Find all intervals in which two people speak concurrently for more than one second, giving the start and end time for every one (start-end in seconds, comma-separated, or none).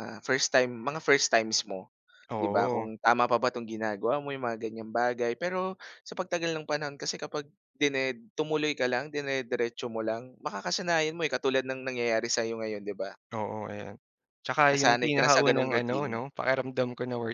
14.7-16.1